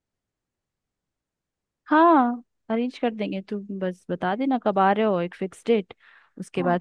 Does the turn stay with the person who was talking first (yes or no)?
yes